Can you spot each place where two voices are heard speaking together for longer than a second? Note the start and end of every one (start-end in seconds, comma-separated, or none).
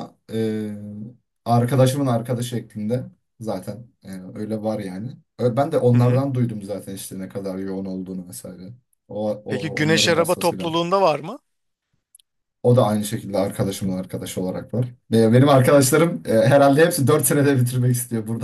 9.5-10.7